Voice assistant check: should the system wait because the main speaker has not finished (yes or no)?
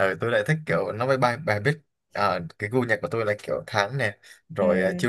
yes